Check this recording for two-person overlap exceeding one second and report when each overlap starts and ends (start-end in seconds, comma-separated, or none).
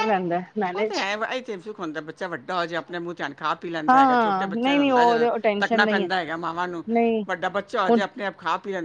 3.9-6.1